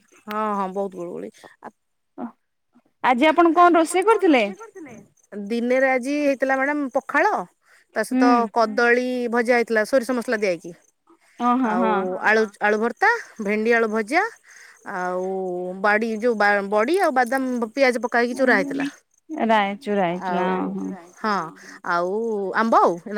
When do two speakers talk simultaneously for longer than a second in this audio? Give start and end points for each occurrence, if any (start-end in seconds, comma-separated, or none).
none